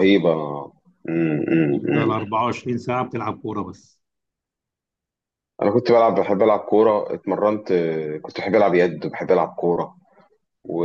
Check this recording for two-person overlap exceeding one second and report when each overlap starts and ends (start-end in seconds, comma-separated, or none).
none